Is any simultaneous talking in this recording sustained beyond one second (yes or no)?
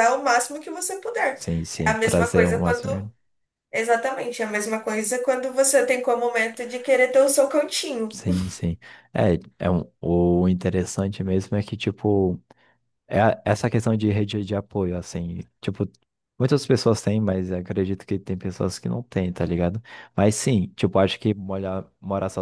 yes